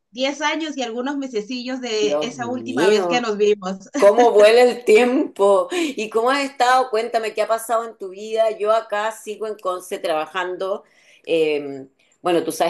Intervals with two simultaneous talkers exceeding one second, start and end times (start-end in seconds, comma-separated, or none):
2.0-3.3